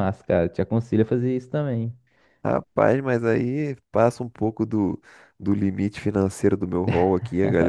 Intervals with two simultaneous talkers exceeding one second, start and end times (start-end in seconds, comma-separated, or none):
none